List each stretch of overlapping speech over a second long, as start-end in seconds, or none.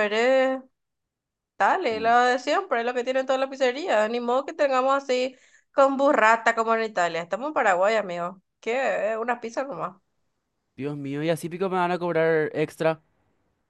none